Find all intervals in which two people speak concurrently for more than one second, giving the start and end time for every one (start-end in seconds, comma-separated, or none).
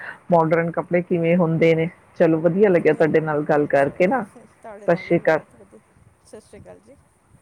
2.7-4.2